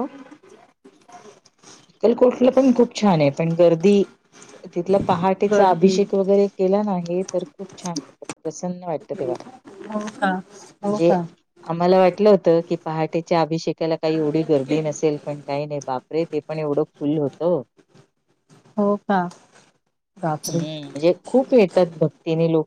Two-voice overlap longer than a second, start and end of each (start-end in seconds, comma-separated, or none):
none